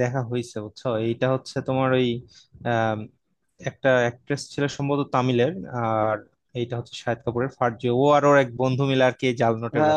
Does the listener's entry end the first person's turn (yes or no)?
yes